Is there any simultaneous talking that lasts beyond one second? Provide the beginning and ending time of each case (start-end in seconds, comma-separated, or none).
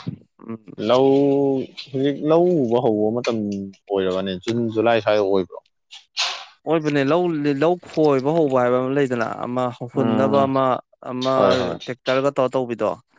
none